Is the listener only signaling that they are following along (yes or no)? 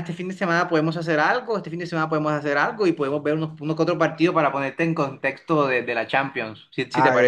no